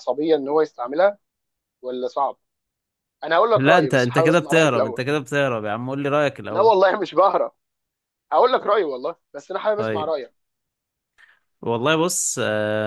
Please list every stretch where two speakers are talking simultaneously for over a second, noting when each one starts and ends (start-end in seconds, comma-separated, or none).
3.5-5.0